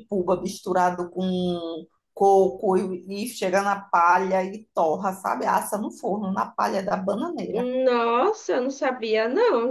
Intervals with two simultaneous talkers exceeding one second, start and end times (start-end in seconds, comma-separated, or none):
none